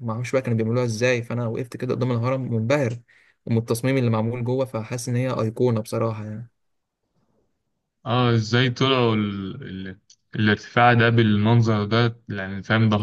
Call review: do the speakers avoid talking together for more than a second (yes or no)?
yes